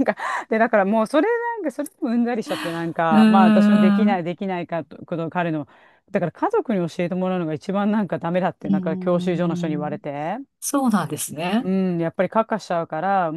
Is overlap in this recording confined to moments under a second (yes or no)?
no